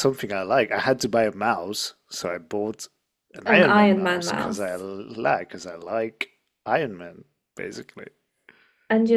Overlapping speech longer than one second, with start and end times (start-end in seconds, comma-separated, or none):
3.5-4.8